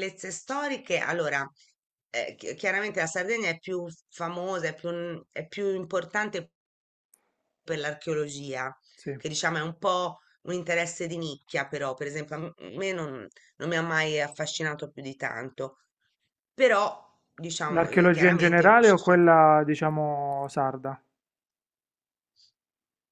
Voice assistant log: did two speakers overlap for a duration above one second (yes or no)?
yes